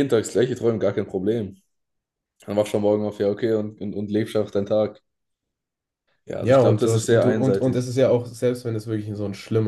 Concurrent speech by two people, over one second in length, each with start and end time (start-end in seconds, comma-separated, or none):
6.4-7.9